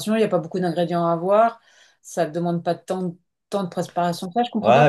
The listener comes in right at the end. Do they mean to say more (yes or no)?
yes